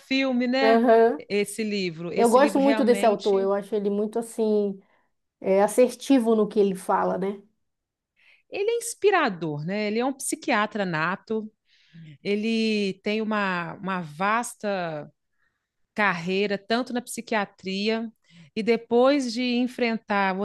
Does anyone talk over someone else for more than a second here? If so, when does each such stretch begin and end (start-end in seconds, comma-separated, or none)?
2.1-3.5